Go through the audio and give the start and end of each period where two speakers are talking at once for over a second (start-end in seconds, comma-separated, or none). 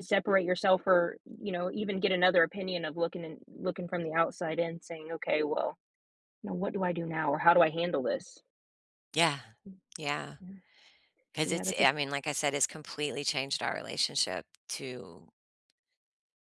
none